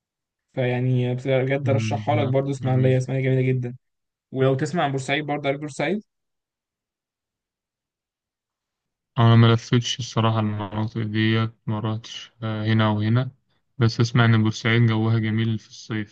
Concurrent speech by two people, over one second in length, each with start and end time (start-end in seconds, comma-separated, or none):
1.6-3.0